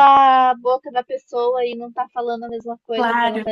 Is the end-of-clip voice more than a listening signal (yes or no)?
yes